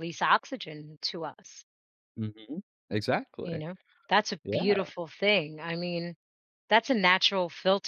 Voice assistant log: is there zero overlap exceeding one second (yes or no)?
yes